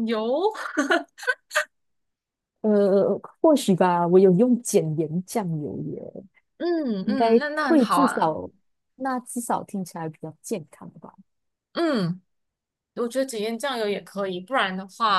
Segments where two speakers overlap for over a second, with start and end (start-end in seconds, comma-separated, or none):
7.0-8.4